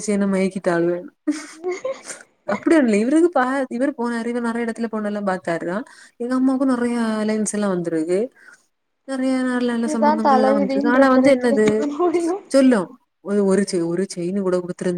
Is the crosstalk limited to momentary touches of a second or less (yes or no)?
no